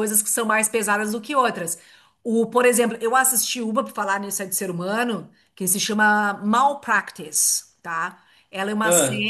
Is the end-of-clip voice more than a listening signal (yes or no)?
no